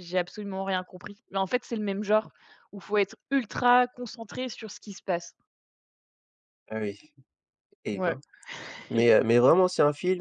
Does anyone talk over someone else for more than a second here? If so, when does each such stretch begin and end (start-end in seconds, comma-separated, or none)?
none